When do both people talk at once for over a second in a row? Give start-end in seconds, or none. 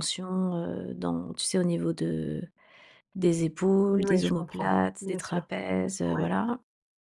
3.9-5.5